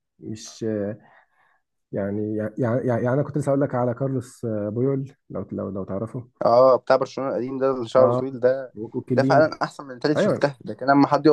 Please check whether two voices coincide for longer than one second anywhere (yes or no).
no